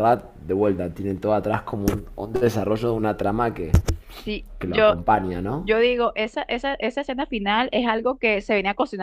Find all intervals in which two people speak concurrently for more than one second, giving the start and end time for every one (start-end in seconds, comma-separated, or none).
none